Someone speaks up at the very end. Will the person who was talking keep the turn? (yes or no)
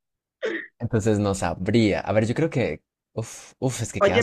no